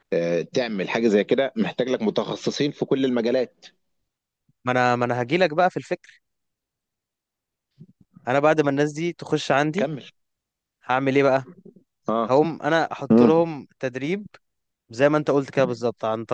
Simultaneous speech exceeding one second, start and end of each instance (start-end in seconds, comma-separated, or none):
none